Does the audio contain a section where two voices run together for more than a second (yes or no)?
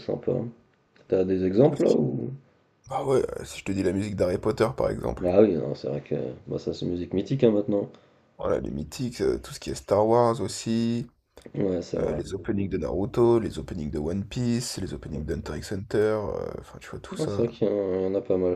no